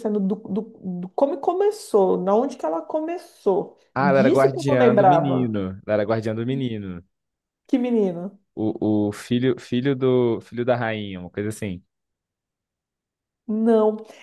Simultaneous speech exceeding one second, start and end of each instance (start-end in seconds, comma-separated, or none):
3.9-5.6